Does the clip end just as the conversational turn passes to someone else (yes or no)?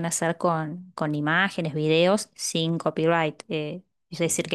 no